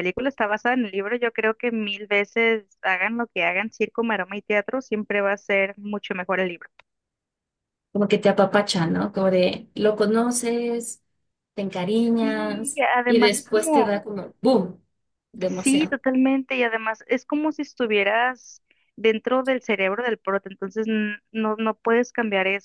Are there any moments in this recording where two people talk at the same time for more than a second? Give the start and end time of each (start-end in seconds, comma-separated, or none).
12.2-13.9